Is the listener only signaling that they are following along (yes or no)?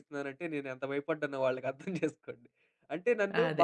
yes